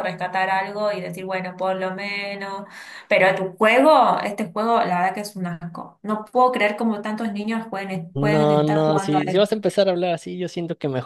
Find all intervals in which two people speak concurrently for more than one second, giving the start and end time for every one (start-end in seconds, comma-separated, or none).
8.1-9.6